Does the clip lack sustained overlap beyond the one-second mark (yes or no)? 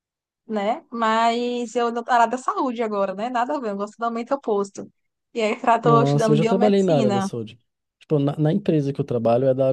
no